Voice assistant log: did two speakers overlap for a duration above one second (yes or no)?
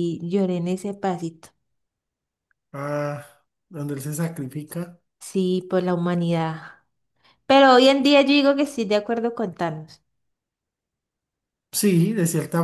no